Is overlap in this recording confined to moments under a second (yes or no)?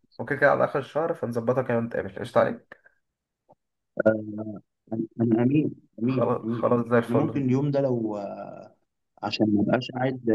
no